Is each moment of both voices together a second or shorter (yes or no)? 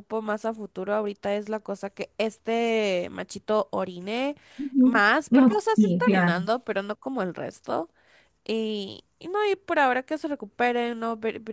no